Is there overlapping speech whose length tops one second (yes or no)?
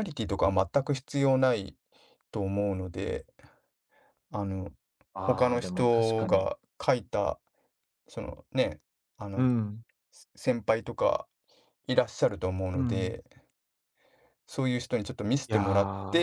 yes